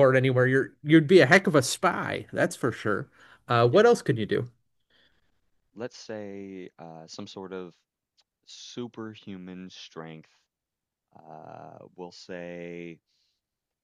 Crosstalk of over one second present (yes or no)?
no